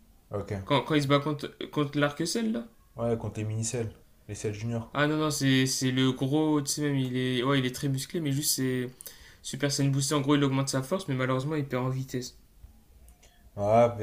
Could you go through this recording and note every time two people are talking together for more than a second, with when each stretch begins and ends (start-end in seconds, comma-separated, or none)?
none